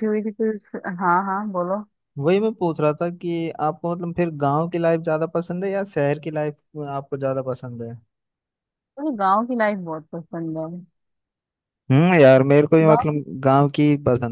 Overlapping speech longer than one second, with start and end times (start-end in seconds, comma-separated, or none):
none